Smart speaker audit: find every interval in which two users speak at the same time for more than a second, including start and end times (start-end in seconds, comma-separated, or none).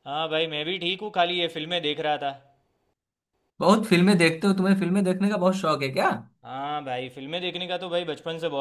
none